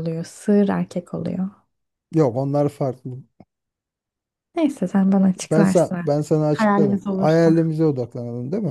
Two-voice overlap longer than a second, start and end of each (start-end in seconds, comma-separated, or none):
5.4-7.6